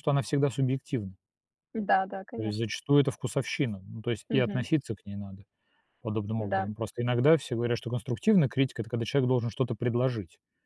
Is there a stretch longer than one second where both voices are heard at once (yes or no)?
no